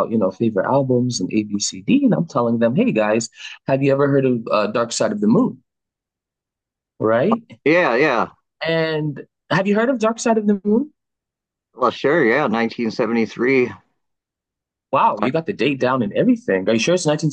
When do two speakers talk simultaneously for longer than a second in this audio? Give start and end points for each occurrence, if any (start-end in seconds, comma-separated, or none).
none